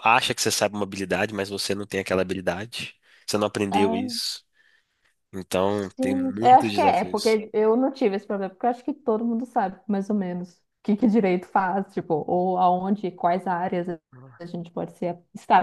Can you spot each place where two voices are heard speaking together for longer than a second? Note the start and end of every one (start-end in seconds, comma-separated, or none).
6.0-7.4